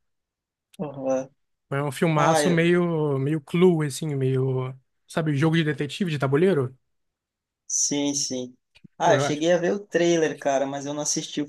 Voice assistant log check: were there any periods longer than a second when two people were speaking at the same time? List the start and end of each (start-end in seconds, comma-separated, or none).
none